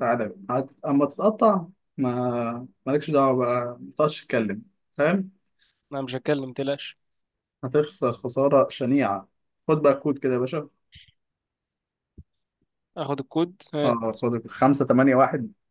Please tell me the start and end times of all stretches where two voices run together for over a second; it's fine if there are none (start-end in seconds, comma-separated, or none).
none